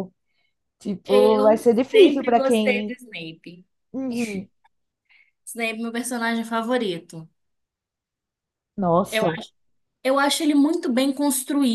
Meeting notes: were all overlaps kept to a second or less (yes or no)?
no